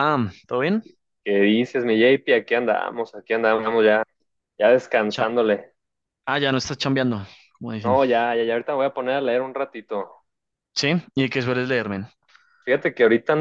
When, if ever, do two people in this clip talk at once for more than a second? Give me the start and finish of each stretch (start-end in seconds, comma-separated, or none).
none